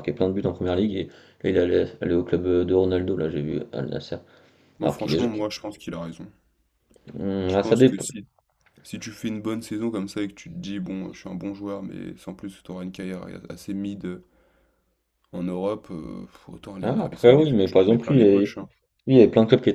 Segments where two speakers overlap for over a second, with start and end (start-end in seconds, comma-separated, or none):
16.8-18.5